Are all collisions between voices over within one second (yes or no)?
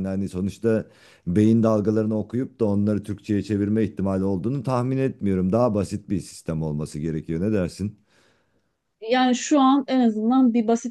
yes